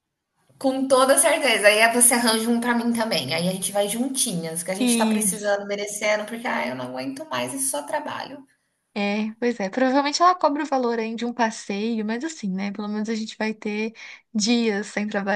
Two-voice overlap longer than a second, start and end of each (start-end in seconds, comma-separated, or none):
none